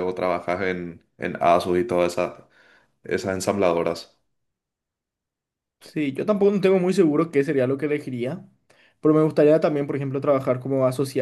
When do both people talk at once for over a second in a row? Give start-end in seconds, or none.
none